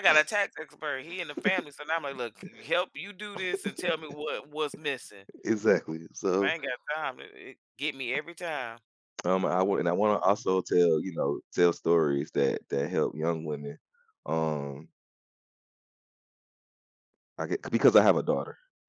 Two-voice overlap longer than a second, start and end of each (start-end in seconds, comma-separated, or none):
none